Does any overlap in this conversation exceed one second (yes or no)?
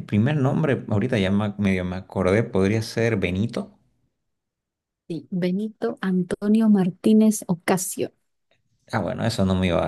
no